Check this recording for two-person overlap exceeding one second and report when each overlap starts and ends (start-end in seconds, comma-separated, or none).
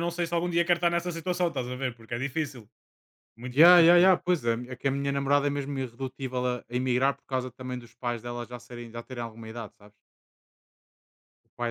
none